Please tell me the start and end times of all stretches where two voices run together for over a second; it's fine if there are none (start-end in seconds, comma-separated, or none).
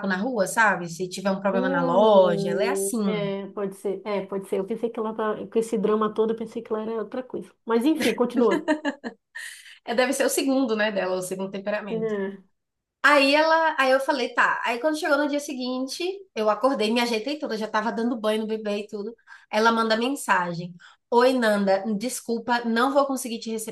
1.5-3.0